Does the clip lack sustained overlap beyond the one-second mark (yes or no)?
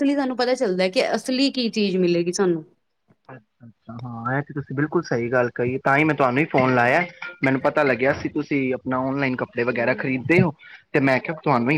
yes